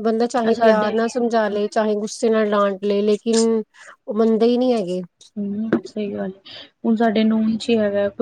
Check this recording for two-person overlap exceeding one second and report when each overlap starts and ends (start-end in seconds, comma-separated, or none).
none